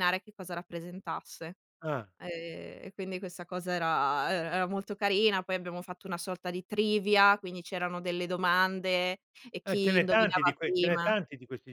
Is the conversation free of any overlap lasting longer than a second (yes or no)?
no